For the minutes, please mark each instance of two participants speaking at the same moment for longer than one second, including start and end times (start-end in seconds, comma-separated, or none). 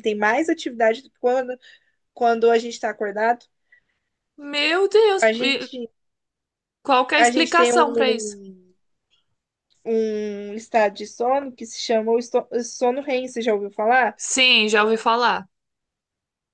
7.1-8.4